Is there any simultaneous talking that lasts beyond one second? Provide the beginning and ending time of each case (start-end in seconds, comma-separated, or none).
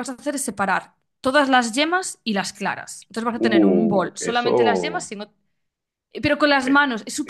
3.4-5.1